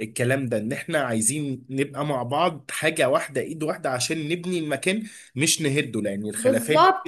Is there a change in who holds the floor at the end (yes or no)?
yes